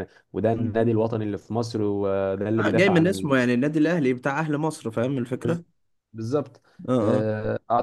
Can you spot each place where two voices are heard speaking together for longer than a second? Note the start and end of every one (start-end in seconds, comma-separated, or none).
none